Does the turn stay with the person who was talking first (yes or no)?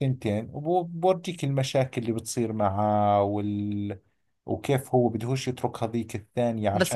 no